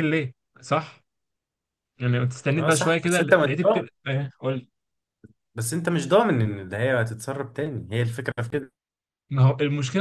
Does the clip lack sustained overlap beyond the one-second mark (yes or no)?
no